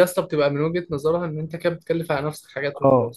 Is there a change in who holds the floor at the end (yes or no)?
yes